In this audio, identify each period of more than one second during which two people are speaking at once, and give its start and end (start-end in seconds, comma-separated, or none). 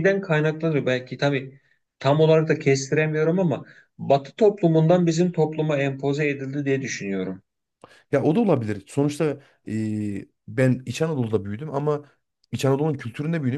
none